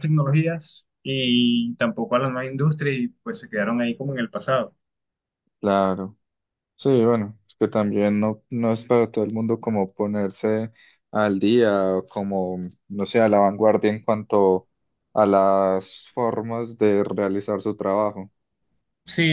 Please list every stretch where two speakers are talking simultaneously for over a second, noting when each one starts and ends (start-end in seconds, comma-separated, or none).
none